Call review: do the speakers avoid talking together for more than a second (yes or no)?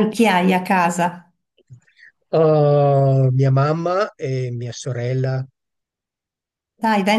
yes